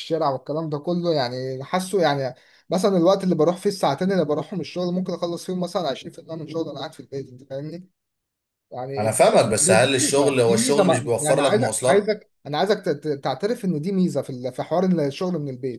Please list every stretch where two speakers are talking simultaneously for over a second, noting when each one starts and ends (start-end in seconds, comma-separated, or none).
9.0-12.1